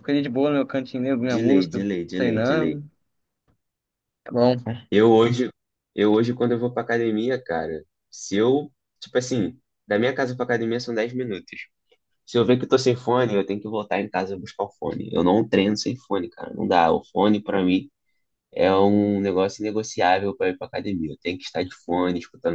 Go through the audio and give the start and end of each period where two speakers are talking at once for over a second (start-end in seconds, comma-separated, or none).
1.3-2.8